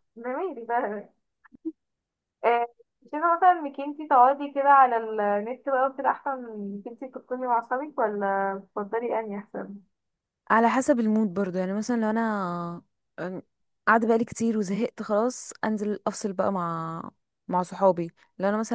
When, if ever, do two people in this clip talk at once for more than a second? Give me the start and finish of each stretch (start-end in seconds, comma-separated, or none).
none